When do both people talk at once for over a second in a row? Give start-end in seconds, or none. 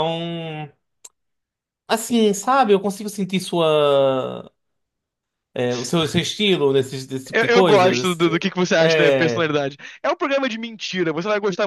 7.3-9.5